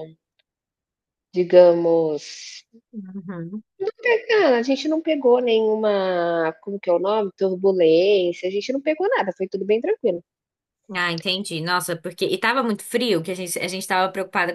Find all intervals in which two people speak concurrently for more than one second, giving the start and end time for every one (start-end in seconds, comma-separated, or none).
none